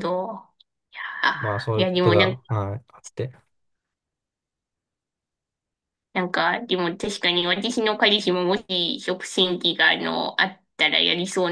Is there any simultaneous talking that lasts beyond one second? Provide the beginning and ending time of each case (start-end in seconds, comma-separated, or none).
1.3-2.6